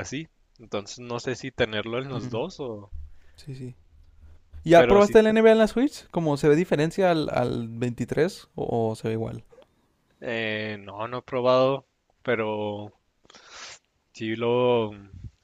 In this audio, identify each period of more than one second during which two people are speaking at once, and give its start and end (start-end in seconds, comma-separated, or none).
none